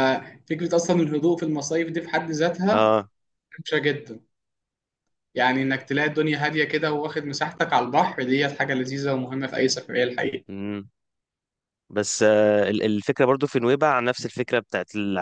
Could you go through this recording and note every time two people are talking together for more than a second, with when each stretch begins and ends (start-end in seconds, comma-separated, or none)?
none